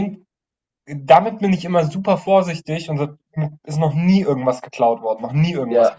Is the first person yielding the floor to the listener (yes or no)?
yes